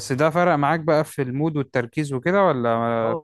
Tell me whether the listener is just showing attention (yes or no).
no